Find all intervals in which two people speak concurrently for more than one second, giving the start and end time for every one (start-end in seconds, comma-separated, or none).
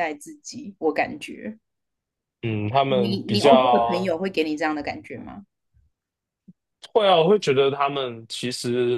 2.9-4.2